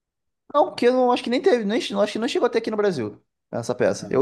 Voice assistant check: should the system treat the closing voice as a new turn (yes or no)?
no